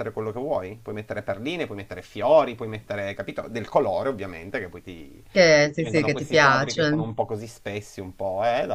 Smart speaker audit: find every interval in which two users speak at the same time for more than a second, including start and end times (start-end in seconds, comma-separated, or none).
5.7-7.1